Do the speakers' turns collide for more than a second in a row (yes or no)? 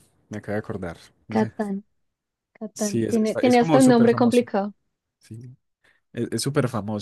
yes